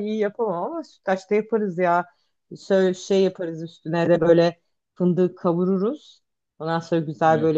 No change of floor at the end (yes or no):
yes